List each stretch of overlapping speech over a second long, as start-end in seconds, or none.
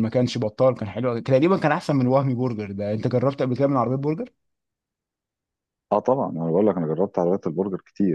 none